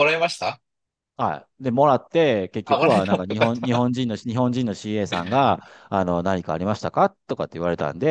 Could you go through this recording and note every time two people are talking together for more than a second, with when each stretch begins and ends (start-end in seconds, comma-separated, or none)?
2.6-3.9